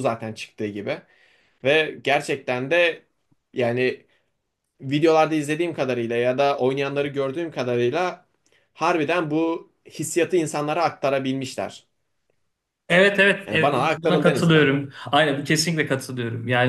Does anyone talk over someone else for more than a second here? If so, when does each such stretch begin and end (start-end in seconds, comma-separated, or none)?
13.5-14.8